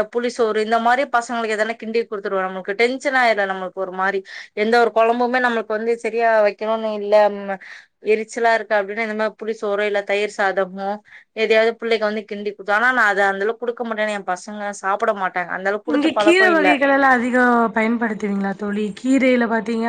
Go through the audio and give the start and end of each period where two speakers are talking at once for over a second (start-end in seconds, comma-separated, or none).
none